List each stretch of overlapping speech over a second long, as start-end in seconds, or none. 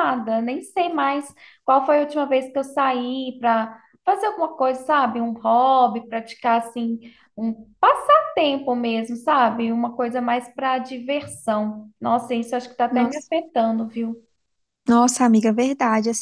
none